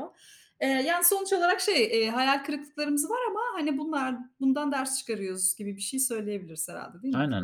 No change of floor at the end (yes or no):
no